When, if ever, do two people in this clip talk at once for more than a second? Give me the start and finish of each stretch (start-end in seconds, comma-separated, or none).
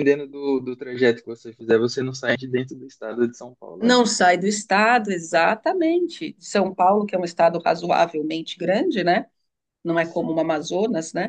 none